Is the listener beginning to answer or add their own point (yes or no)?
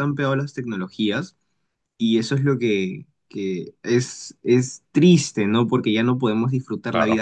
no